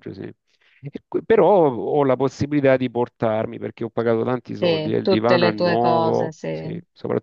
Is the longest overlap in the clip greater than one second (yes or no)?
yes